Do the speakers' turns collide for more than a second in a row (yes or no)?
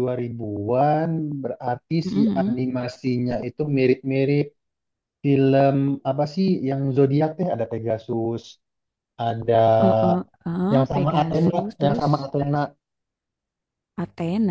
yes